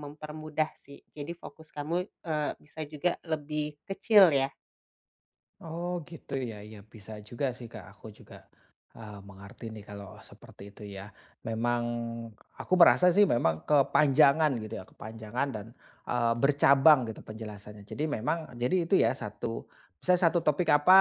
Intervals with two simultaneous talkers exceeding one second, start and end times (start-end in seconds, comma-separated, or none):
none